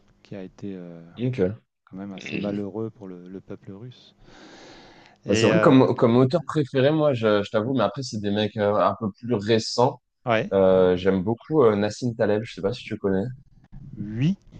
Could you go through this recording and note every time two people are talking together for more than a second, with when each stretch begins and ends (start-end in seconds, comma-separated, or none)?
none